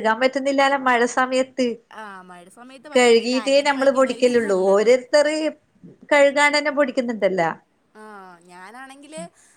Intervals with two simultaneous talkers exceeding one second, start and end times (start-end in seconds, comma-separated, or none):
3.0-4.9